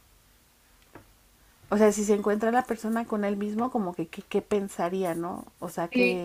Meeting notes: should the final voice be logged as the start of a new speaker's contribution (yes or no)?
yes